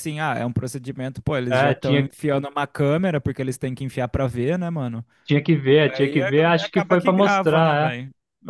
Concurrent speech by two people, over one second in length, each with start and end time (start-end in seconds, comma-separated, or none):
5.8-8.0